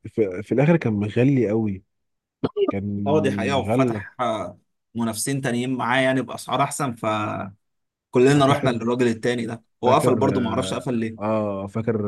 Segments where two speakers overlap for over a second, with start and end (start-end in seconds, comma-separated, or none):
9.8-11.3